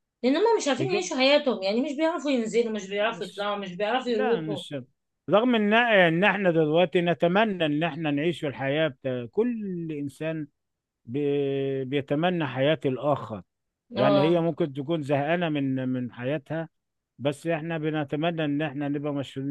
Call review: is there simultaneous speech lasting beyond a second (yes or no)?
no